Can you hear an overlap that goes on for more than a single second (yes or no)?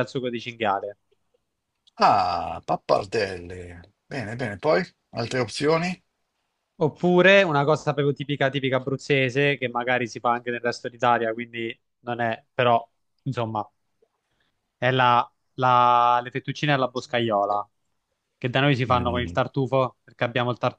no